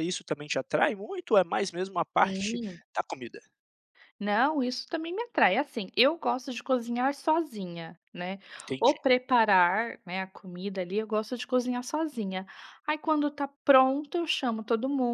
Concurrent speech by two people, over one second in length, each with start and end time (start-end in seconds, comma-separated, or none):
none